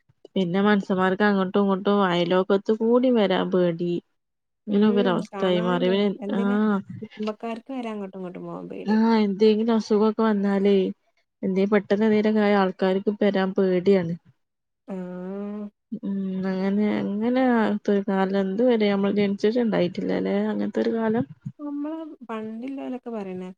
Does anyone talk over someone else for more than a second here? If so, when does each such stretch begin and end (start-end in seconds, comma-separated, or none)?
4.7-6.6